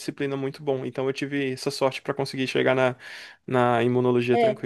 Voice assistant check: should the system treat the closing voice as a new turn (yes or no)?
yes